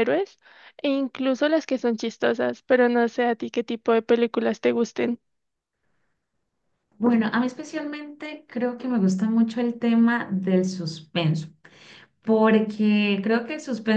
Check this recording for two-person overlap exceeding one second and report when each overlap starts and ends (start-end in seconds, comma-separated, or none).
none